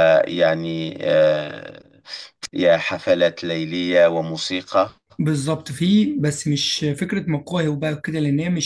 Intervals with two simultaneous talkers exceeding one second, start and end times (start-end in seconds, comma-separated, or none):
none